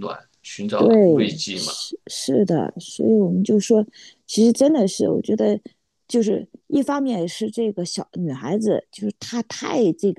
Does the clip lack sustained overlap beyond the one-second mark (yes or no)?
yes